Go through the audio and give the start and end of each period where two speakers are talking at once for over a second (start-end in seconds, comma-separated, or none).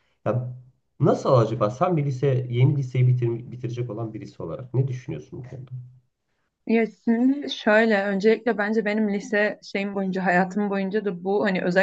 none